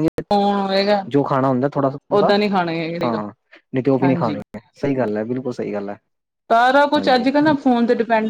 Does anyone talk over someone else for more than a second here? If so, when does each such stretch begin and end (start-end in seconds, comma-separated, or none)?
none